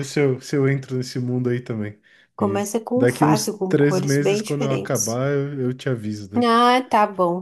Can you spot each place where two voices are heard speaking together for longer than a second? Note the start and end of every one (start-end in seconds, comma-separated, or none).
2.4-5.2